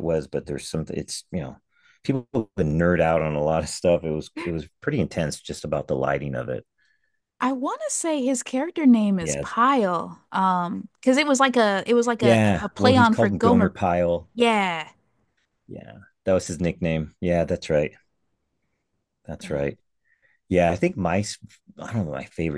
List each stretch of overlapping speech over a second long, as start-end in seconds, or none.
12.2-13.7